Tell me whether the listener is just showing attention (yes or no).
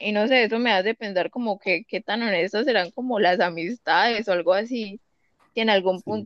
yes